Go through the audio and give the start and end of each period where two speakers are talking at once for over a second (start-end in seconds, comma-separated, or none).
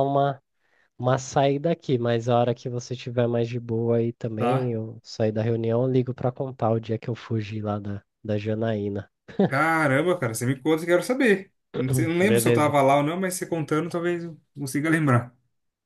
none